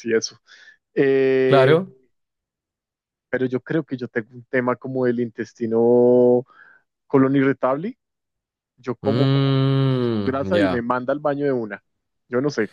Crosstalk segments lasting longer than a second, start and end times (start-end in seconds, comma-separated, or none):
9.0-10.8